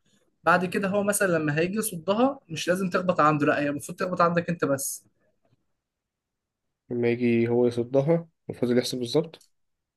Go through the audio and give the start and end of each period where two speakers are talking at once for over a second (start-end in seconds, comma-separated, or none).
none